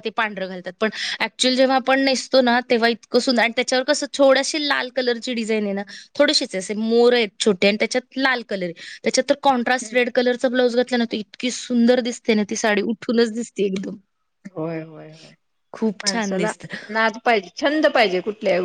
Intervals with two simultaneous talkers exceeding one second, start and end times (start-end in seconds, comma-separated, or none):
none